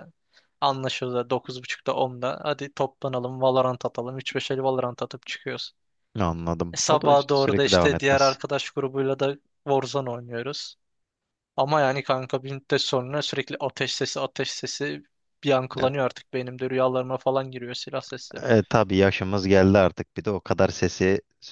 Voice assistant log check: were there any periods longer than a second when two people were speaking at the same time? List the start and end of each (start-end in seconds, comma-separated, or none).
6.7-8.4